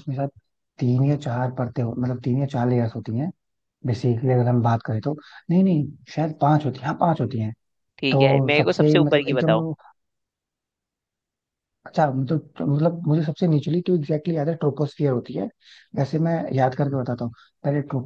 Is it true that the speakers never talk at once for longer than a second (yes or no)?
no